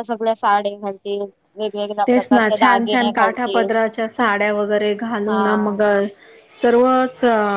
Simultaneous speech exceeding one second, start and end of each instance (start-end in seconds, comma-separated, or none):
2.1-3.8